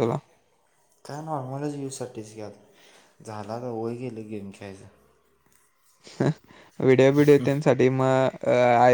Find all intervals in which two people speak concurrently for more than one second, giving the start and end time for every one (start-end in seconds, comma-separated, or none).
none